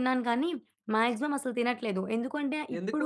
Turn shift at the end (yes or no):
no